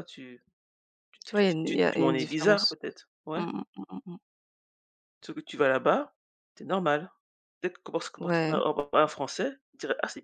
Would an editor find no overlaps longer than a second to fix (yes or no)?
no